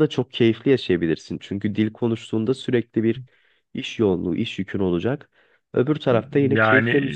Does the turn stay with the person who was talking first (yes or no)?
no